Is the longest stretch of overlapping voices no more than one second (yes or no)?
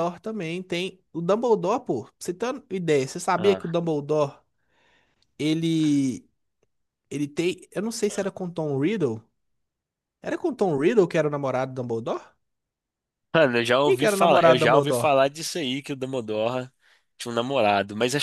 no